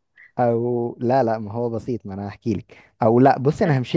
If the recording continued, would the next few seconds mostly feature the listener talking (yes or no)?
no